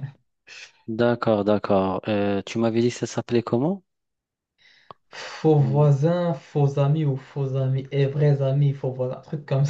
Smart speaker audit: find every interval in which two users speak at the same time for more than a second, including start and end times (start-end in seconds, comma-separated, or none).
none